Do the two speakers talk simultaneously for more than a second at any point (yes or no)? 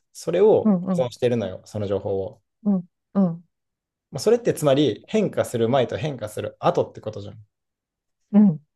no